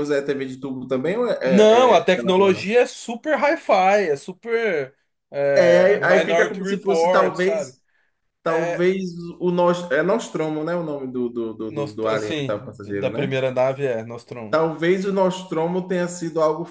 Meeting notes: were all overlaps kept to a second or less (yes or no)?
no